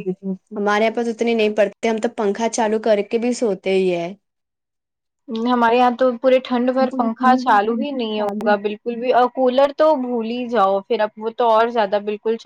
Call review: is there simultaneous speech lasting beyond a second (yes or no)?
yes